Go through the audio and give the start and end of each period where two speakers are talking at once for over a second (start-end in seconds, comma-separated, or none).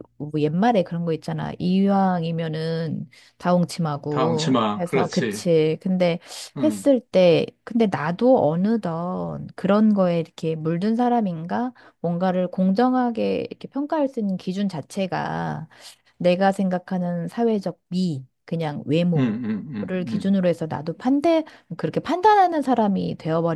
4.1-5.5, 19.2-20.4